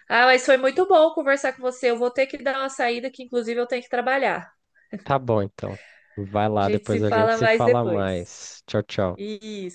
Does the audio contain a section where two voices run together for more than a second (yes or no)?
yes